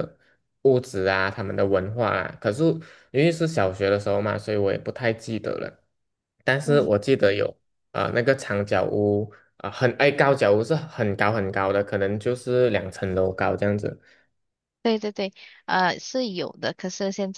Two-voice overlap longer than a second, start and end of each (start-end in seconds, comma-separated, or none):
none